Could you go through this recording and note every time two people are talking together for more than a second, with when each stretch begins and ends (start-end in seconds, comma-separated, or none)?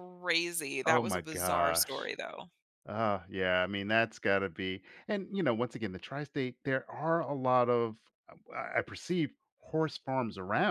0.8-2.1